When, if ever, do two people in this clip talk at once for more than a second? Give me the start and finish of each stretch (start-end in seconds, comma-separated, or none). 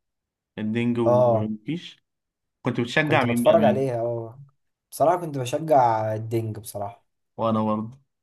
none